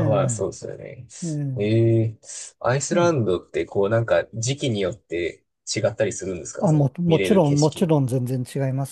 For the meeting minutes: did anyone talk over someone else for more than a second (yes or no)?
yes